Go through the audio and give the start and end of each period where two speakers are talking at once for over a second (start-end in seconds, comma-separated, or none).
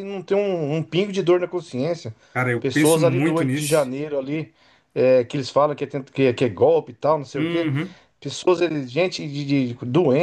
2.6-3.9